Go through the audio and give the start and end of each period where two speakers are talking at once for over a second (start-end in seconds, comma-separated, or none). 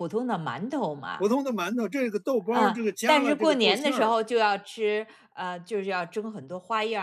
2.5-4.2